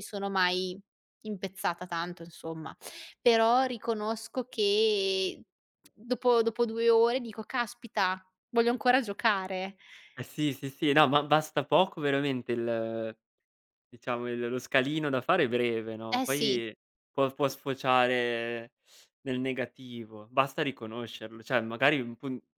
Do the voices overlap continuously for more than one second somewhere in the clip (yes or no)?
no